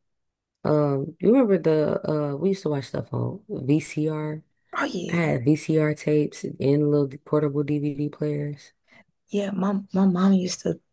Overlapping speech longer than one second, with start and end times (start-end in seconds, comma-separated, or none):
none